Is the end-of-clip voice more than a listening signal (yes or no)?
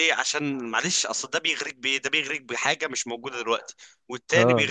yes